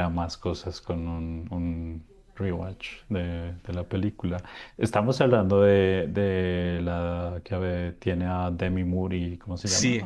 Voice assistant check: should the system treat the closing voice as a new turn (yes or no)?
yes